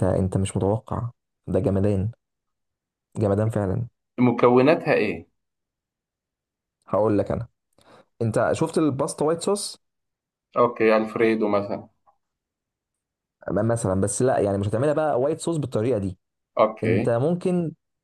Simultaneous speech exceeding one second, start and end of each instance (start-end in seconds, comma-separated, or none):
none